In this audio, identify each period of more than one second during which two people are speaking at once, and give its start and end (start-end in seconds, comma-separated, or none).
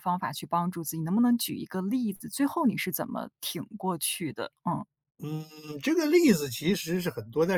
none